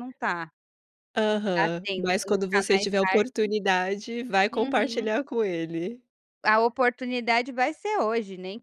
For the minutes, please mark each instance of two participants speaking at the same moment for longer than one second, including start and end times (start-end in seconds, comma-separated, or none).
1.6-3.5